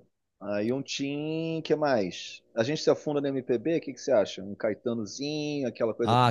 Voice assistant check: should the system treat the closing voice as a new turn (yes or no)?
yes